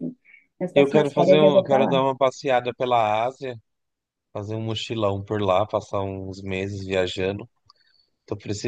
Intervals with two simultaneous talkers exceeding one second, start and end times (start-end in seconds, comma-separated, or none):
0.8-2.0